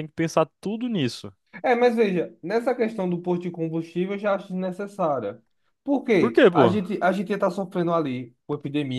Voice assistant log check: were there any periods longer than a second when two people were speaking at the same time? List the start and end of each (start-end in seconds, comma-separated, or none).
none